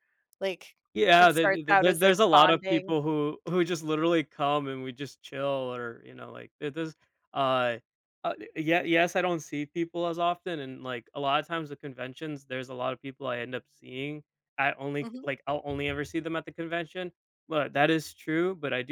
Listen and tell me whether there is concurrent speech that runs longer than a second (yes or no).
yes